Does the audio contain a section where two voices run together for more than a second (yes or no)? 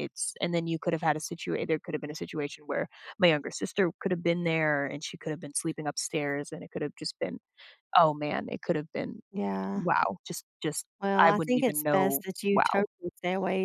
yes